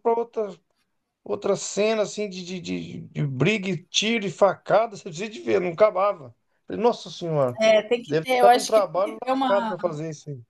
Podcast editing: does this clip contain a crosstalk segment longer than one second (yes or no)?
yes